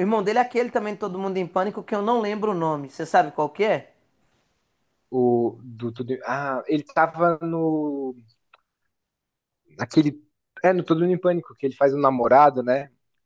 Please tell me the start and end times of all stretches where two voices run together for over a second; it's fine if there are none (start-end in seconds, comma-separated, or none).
none